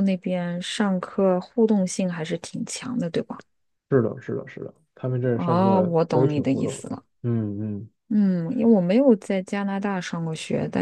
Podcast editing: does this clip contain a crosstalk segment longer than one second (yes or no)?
yes